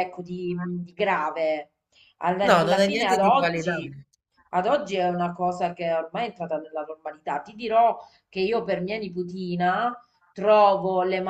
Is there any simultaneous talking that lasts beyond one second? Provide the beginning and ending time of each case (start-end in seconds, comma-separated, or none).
2.5-3.9